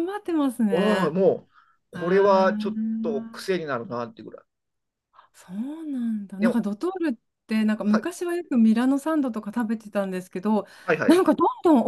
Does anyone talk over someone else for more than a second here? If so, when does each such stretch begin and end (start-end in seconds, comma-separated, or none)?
1.9-3.5